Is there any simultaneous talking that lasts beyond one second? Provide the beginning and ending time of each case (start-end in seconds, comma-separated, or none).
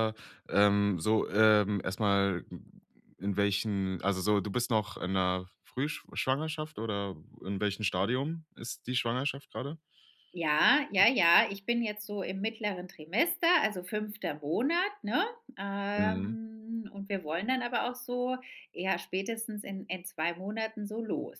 none